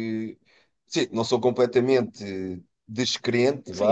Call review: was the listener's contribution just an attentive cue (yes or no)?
no